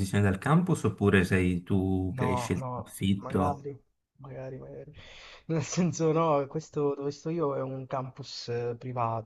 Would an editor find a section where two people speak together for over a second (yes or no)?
yes